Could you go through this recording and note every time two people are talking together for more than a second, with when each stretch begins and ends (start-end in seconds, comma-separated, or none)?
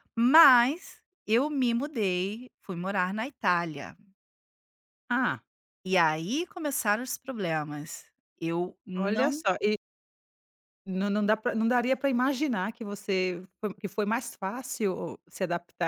none